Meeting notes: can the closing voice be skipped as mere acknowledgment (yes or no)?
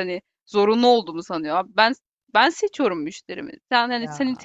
yes